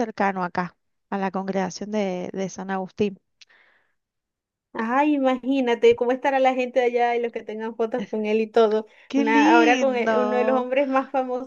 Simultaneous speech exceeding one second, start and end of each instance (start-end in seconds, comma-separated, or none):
9.1-10.7